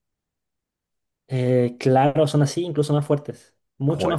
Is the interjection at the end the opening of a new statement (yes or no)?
yes